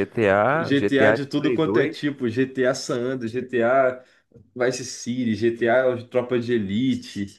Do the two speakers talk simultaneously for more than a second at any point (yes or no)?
yes